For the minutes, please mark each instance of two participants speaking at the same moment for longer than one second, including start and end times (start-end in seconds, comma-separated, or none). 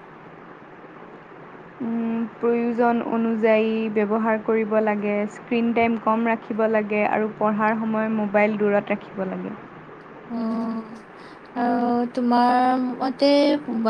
none